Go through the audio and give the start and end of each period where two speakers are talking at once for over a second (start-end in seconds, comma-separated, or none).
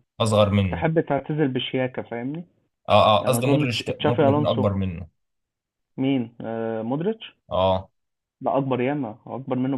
3.2-4.7